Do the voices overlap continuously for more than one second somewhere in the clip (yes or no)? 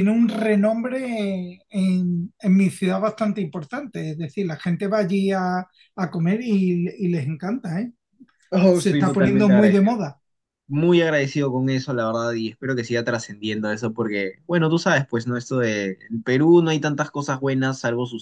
yes